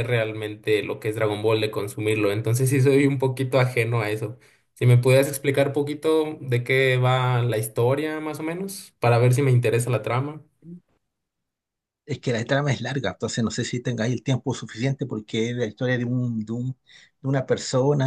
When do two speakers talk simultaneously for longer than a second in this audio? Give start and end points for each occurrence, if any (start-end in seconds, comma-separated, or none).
none